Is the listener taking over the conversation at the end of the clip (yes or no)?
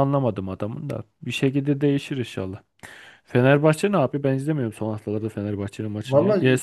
no